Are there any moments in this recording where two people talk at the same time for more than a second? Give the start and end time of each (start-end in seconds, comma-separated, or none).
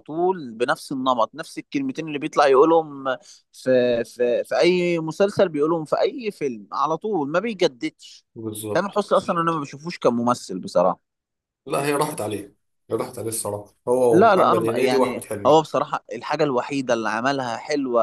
14.1-15.6